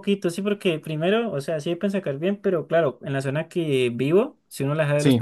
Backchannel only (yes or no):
yes